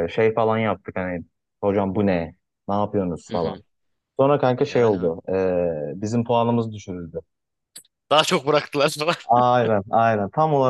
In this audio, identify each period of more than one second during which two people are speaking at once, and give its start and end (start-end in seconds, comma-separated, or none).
none